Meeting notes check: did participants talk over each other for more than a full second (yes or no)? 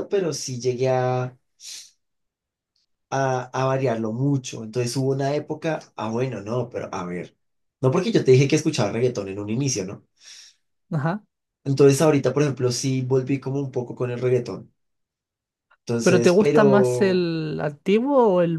yes